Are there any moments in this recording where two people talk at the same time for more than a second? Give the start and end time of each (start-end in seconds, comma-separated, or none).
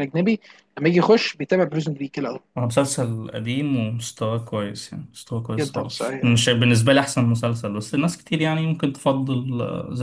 none